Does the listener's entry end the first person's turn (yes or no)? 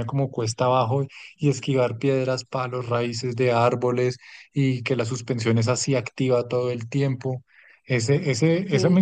no